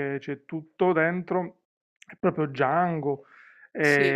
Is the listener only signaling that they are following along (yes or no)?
yes